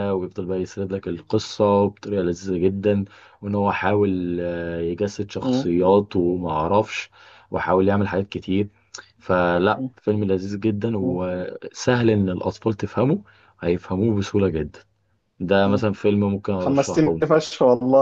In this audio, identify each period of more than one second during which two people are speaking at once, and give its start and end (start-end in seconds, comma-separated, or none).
none